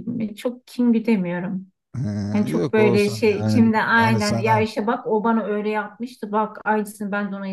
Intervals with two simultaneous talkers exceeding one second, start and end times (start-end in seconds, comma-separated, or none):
2.3-4.7